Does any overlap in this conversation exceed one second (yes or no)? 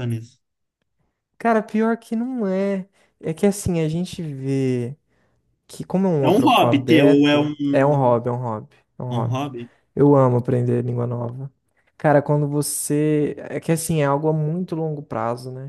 yes